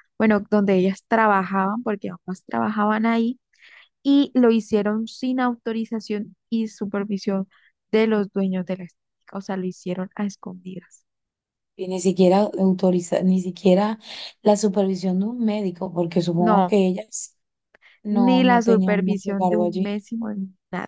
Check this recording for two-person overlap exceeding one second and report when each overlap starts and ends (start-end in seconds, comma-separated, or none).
18.1-19.9